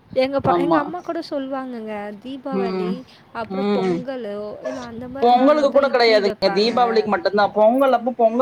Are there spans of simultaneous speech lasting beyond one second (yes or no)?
yes